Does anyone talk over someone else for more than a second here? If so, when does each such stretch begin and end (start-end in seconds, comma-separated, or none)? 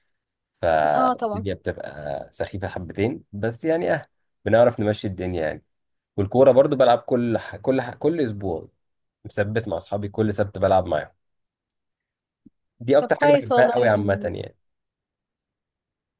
13.0-14.3